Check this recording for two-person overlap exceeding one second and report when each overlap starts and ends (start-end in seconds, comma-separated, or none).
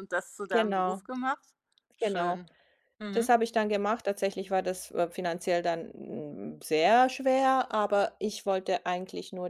none